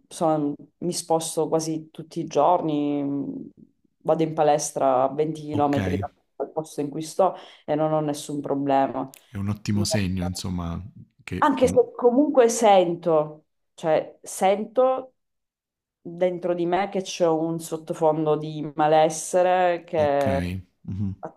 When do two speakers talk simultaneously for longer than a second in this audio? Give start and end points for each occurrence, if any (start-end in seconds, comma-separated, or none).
none